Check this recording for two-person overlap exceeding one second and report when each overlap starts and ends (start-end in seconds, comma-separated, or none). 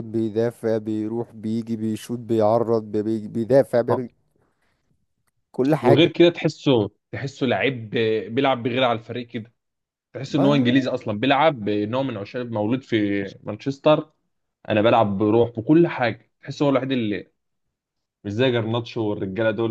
none